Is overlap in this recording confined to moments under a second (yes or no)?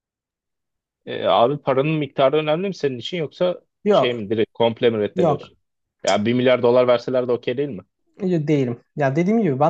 yes